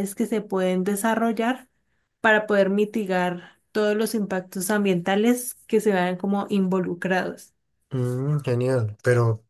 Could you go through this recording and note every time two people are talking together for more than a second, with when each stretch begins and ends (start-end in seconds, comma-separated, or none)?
none